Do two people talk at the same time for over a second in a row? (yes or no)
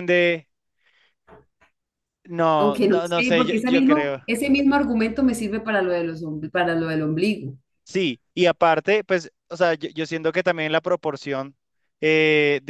yes